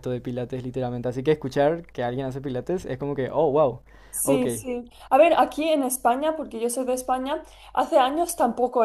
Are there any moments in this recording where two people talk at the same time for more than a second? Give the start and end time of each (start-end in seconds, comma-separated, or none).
none